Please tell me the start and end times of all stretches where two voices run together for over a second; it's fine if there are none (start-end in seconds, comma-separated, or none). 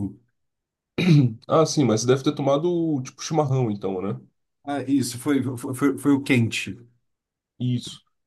none